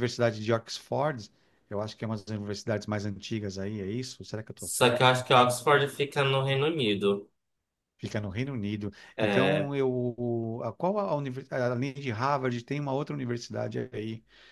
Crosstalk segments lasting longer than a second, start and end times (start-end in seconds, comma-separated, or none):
none